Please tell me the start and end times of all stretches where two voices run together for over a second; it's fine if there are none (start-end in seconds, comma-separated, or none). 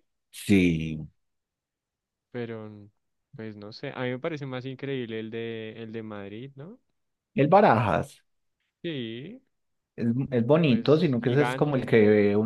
10.7-11.9